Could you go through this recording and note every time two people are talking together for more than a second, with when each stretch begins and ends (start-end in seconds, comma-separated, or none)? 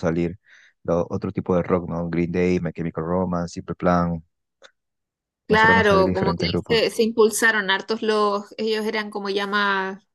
5.5-6.8